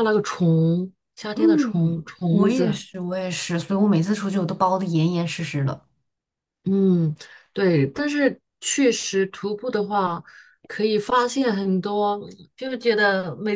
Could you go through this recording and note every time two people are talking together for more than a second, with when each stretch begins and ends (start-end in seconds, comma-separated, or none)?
1.4-2.8